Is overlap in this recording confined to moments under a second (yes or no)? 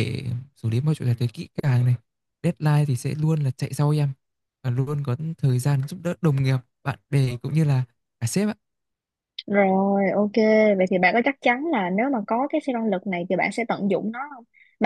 yes